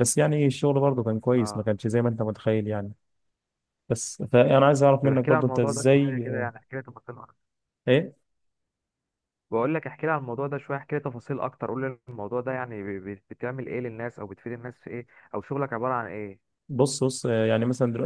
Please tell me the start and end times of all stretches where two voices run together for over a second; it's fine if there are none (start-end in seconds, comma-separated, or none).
5.0-6.2